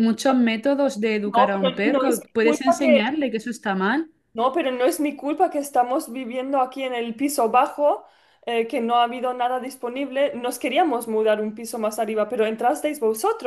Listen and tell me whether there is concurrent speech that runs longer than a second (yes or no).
yes